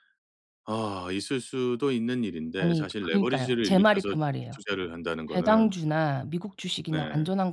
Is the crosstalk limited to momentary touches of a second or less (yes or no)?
no